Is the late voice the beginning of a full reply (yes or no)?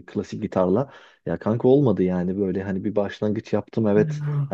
no